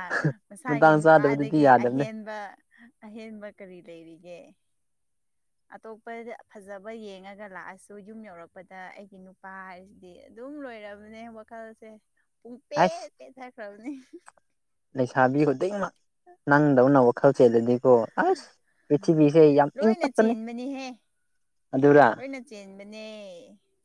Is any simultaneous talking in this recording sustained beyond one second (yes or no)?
yes